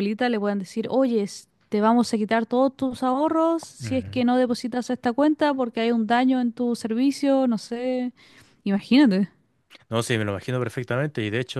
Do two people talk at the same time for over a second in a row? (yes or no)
no